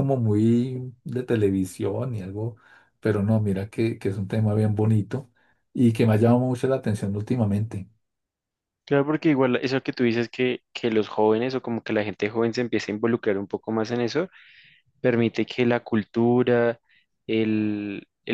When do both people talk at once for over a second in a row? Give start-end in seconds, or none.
none